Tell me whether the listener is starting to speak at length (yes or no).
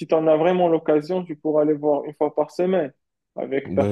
yes